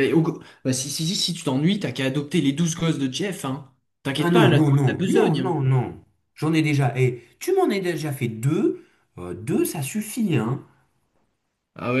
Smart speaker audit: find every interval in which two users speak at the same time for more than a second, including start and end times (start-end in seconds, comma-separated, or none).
4.2-5.6